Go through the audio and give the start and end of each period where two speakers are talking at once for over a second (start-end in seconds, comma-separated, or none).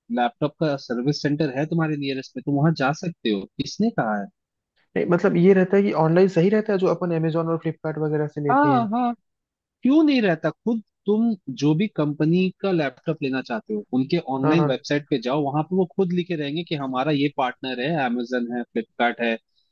none